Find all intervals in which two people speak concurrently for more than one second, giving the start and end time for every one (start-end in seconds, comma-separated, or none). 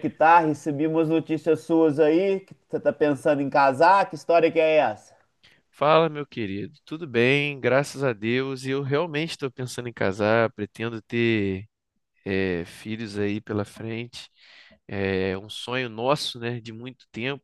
none